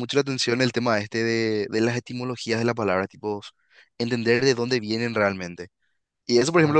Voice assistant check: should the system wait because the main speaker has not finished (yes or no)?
yes